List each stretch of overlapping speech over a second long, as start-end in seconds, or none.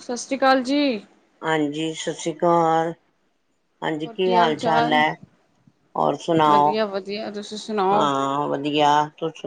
none